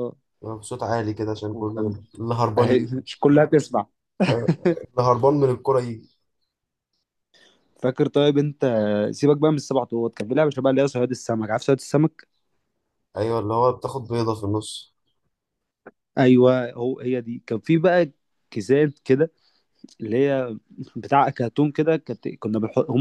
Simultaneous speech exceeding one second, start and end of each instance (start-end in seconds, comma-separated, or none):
none